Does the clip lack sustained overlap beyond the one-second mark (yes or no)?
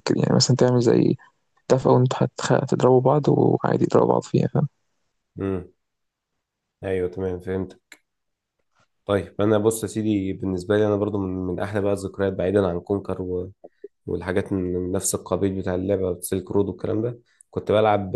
yes